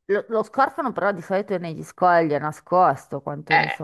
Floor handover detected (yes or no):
yes